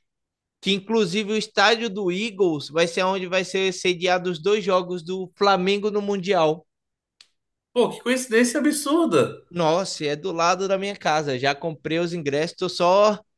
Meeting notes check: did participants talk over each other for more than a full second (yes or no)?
no